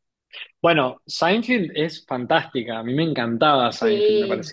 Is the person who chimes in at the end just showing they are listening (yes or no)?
yes